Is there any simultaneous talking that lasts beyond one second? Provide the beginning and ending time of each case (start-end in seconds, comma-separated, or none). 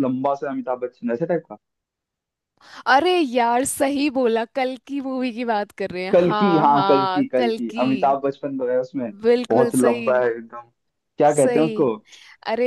6.1-7.8